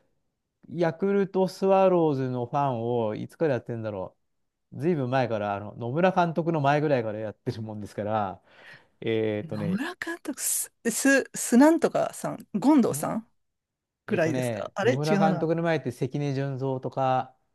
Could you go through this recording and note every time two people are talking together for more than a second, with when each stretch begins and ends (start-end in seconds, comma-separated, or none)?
14.1-15.5